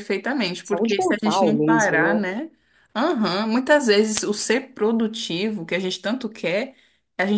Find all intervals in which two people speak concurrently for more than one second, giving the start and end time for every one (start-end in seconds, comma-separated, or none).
0.6-2.2